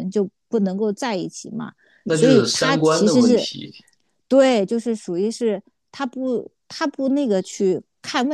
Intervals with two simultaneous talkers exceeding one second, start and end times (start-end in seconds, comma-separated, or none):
2.1-3.5